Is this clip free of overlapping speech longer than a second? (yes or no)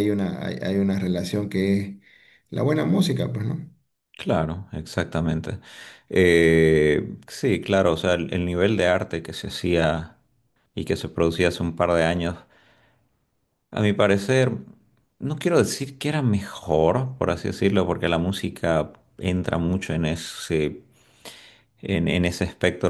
yes